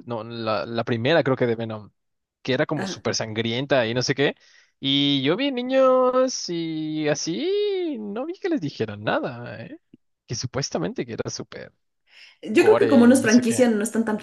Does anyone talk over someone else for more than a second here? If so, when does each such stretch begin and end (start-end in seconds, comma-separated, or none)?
12.5-13.7